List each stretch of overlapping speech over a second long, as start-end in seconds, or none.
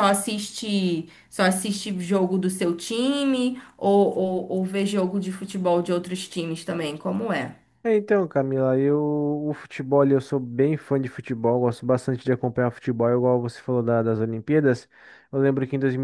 none